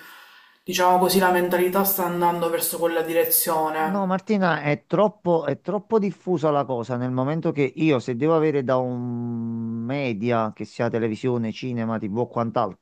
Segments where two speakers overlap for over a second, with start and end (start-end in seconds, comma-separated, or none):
none